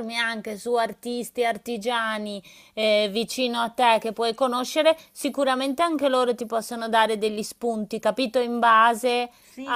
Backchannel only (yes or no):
no